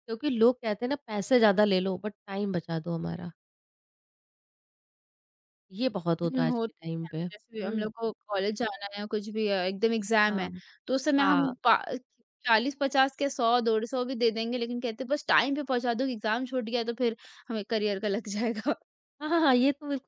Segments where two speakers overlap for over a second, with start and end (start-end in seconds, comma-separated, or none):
6.2-7.9